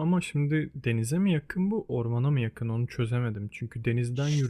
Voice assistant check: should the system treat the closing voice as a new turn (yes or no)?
no